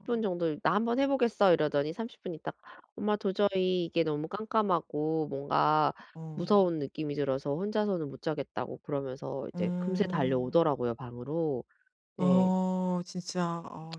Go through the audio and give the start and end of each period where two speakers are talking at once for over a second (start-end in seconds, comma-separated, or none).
9.6-10.8